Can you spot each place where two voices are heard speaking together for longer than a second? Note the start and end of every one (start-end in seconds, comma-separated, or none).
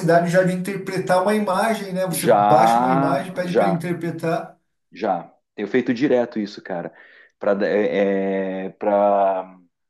2.1-3.8